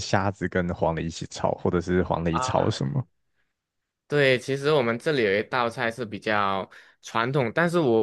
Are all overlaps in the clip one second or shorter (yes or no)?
yes